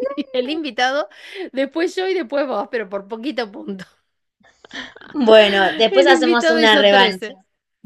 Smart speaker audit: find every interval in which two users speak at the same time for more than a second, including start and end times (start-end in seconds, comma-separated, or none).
5.9-7.3